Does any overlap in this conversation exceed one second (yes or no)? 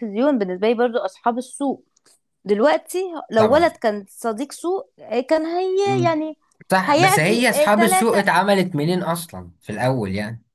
yes